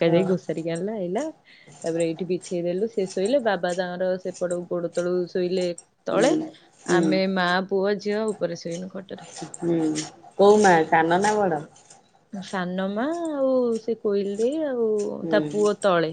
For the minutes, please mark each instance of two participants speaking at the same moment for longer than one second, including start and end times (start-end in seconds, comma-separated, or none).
none